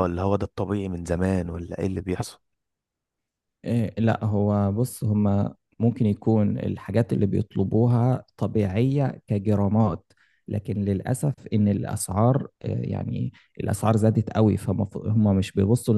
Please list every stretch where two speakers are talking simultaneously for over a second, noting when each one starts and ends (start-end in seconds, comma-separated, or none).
none